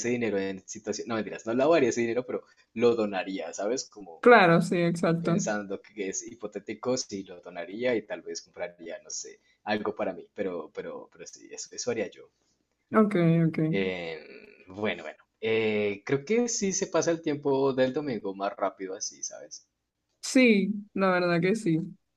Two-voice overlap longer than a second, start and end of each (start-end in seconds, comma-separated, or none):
none